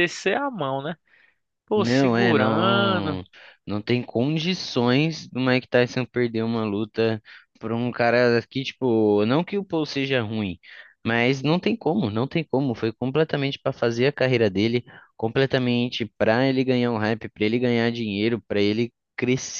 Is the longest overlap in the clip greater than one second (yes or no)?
yes